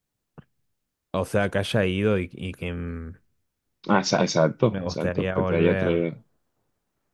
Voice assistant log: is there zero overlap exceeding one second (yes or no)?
no